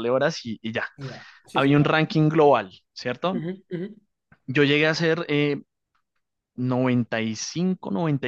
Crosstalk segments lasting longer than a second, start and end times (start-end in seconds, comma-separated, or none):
none